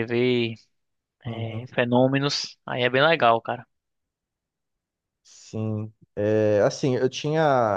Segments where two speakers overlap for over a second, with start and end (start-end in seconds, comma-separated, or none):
none